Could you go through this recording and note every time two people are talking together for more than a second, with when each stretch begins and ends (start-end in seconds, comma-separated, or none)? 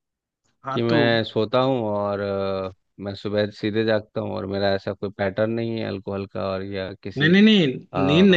none